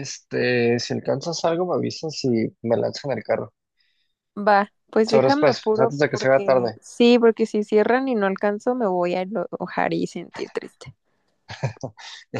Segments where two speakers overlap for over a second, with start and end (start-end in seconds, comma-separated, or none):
5.1-6.8